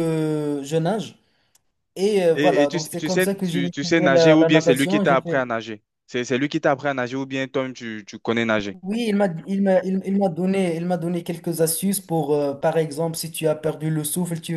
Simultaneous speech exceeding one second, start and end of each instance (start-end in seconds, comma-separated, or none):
2.3-5.4